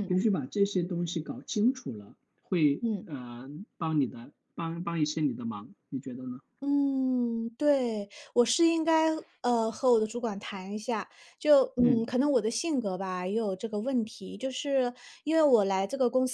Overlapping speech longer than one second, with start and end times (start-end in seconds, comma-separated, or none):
none